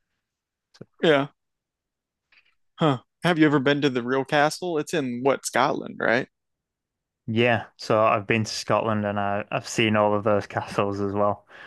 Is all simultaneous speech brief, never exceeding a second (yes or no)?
yes